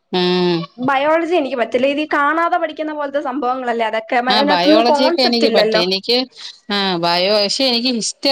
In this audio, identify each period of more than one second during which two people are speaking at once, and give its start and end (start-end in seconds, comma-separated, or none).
4.3-5.8